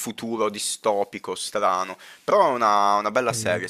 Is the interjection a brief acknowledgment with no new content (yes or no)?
yes